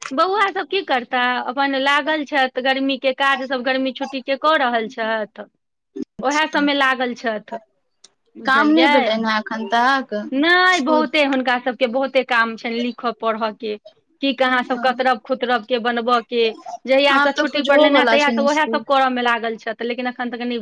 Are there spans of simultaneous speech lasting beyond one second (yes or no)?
yes